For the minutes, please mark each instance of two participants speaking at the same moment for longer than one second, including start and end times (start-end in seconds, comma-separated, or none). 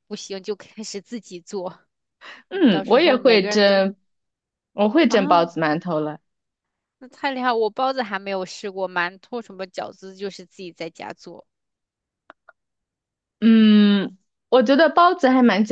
2.5-3.8